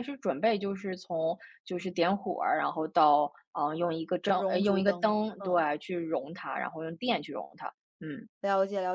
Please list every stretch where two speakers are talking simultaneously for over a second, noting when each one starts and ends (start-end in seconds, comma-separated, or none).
4.3-5.6